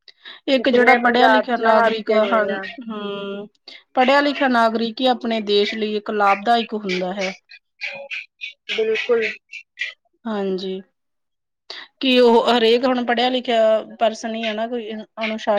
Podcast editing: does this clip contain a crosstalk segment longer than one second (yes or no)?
yes